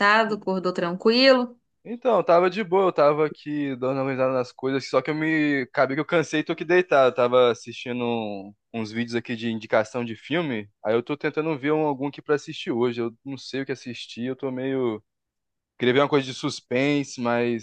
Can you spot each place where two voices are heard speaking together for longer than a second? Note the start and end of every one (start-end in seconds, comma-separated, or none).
none